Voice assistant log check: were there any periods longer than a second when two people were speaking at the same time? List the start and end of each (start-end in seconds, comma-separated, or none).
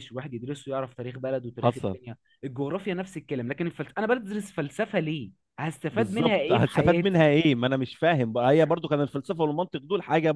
5.9-7.2